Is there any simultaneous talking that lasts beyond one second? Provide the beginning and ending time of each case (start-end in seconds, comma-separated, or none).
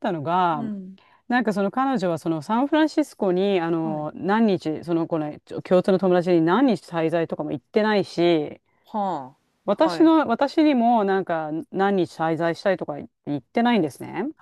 none